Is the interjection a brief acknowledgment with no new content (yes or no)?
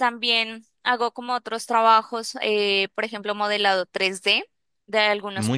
yes